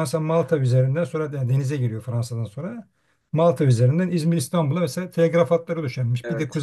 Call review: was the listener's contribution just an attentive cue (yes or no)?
yes